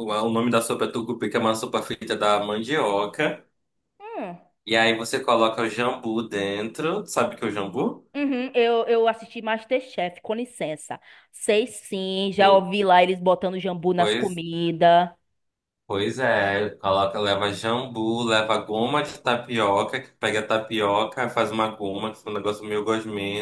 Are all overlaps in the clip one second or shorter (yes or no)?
yes